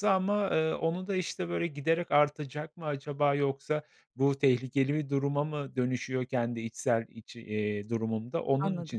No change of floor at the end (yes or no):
yes